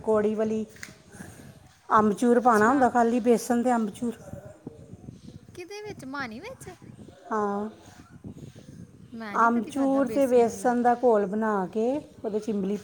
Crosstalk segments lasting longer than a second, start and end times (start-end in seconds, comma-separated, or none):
9.5-10.7